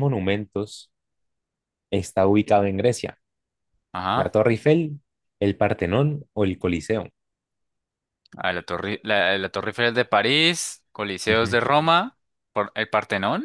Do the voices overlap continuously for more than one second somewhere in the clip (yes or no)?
no